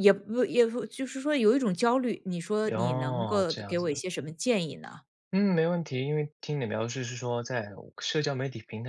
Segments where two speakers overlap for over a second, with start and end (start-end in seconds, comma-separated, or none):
2.7-4.0